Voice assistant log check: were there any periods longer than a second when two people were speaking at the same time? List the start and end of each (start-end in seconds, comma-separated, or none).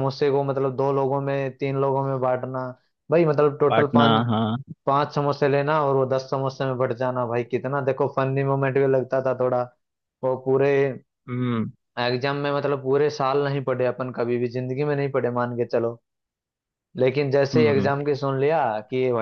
none